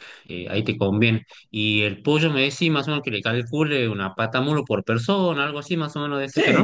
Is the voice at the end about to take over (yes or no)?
yes